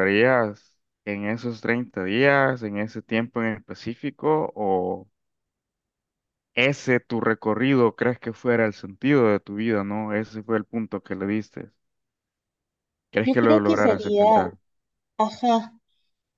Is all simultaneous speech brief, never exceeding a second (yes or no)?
no